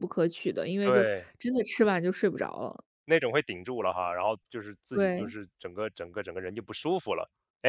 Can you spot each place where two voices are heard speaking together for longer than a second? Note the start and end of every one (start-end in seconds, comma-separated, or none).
none